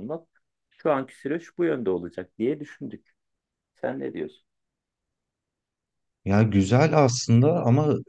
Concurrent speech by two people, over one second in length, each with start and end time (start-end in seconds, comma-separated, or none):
none